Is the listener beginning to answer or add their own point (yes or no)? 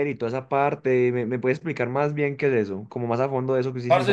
yes